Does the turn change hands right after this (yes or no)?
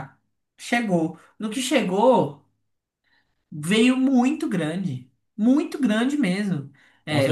yes